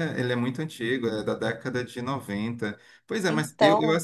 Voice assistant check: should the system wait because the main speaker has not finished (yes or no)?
yes